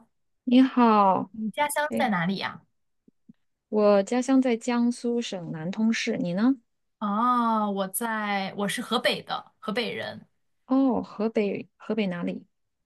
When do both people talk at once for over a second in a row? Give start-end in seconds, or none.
none